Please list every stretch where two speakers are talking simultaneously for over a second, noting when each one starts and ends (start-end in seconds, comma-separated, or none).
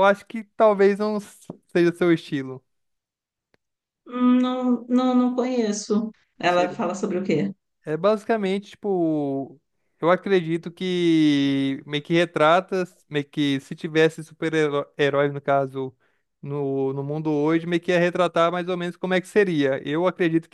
none